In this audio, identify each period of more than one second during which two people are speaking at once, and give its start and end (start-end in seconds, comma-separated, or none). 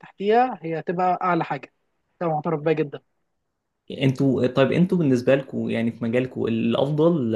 none